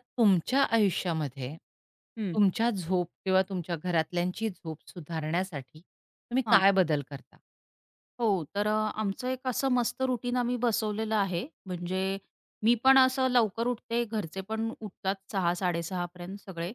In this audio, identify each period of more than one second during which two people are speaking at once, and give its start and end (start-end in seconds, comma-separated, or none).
none